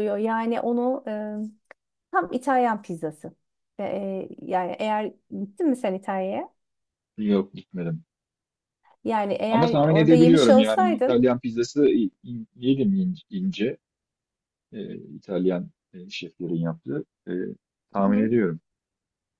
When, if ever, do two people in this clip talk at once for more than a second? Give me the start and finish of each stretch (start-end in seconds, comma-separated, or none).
9.5-11.2